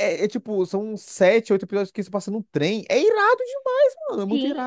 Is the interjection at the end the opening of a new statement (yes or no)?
yes